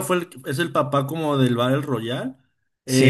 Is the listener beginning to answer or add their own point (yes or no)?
no